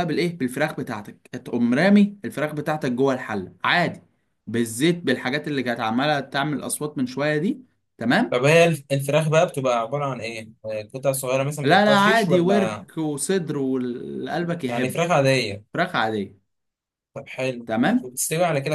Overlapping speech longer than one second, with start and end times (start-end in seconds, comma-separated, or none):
11.6-12.9